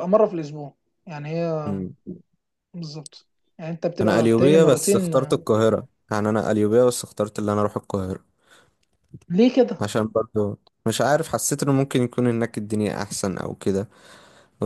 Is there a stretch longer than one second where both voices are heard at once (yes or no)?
yes